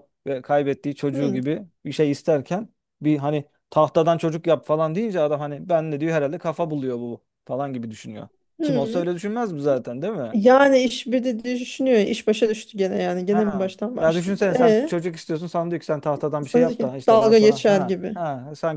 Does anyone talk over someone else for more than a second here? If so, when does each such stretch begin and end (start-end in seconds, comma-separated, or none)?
13.3-14.9, 16.4-18.2